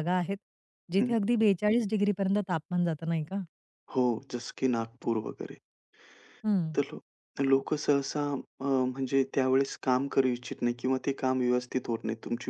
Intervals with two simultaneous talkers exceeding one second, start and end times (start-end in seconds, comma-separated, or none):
none